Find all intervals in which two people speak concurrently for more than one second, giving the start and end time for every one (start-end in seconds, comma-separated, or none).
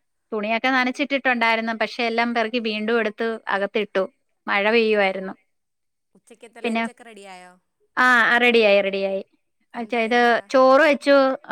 none